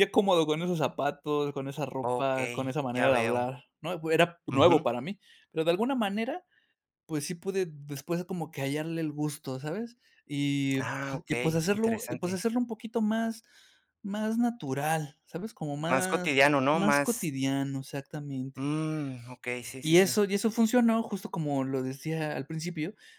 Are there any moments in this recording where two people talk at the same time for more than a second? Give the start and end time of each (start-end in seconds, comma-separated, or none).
2.0-3.4, 10.8-12.4, 15.9-17.3